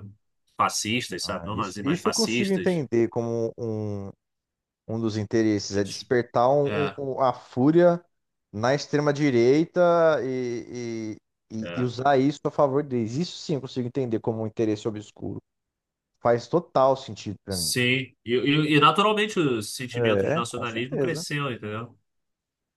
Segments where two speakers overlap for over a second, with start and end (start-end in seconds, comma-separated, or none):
1.2-2.8, 19.9-21.2